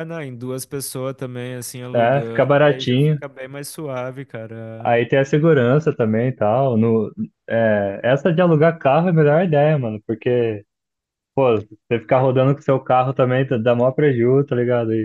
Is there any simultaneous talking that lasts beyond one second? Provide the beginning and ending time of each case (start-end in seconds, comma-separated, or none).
1.9-3.2